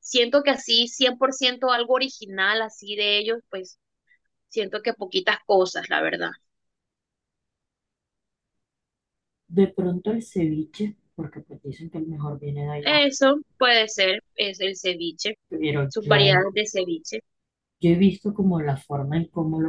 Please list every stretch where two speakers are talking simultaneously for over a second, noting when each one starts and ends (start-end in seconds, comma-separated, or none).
none